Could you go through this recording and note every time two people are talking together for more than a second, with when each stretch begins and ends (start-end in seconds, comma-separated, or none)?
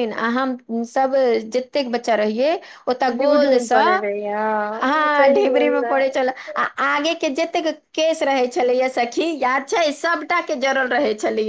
4.8-6.4